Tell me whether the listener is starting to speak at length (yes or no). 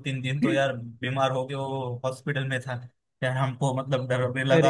no